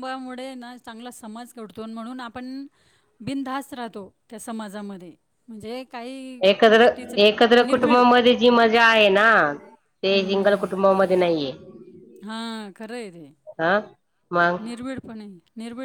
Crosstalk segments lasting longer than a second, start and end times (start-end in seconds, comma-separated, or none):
none